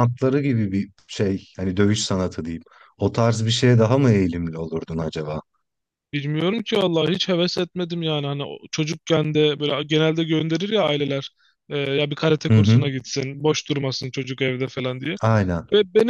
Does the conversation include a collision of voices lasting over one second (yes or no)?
no